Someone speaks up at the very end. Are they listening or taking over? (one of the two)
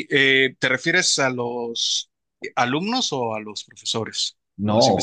taking over